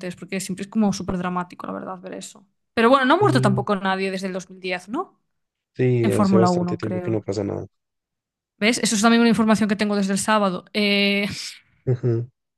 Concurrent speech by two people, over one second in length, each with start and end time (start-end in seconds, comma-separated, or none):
6.0-7.2